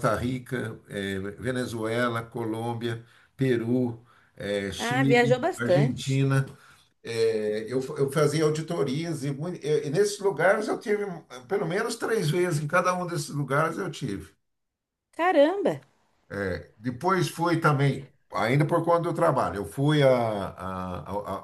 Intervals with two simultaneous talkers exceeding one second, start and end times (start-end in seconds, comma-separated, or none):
4.8-6.2